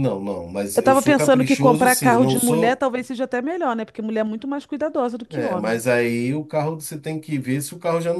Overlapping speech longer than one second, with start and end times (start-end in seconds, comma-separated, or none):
0.7-2.8